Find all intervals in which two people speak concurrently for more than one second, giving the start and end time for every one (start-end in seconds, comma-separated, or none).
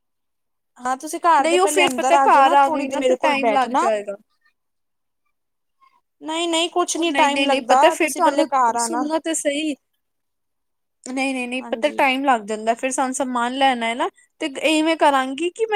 1.4-3.9, 7.0-9.0